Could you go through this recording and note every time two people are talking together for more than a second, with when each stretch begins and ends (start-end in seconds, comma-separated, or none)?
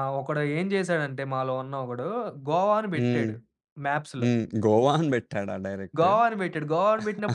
none